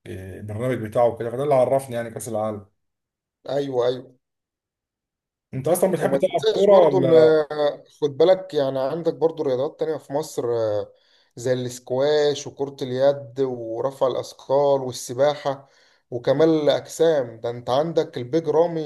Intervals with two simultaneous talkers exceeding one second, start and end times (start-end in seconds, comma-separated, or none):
6.0-7.4